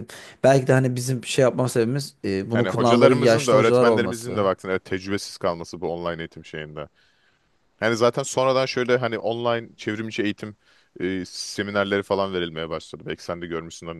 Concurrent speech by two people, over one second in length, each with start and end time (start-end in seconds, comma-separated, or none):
2.5-4.5